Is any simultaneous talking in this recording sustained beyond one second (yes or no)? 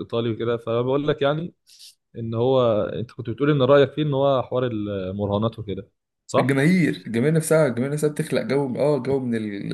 no